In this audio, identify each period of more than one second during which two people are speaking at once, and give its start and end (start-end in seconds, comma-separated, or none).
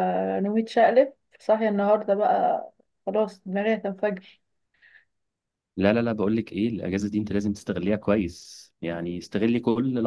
none